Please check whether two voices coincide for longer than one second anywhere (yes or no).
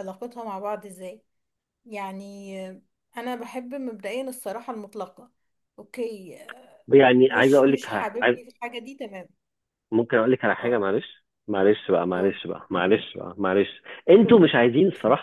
yes